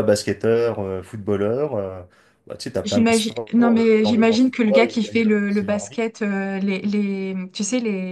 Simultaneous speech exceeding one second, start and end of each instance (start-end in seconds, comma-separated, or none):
2.8-6.0